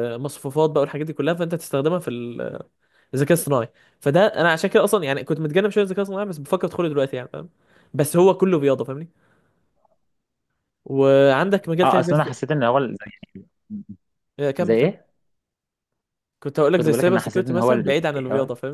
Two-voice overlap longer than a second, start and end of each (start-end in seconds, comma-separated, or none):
16.7-17.9